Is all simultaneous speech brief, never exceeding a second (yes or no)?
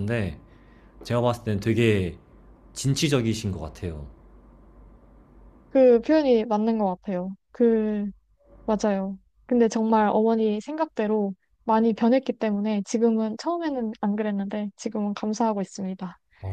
yes